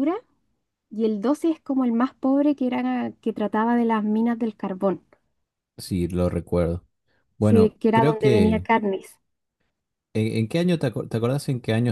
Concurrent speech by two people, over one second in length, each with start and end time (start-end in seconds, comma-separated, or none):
7.4-8.7